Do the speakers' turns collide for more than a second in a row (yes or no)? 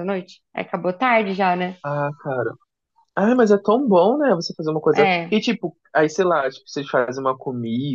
no